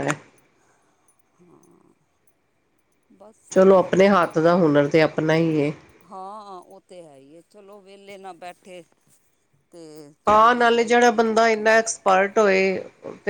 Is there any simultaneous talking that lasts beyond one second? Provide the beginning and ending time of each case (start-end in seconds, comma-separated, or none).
none